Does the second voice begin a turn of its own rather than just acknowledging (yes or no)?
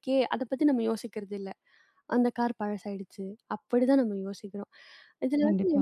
no